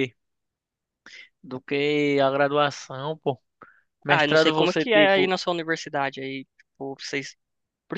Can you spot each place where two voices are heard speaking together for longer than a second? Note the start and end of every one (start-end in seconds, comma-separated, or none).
4.1-5.3